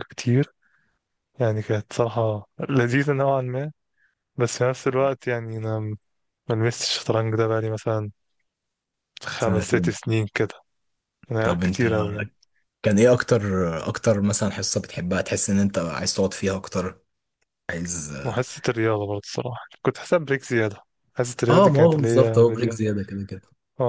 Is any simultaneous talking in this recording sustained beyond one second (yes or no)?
yes